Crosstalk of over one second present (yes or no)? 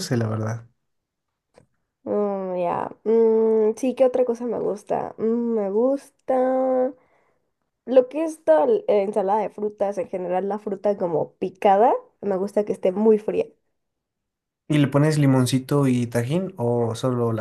no